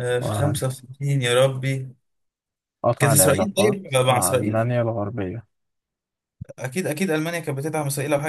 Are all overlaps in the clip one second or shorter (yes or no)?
no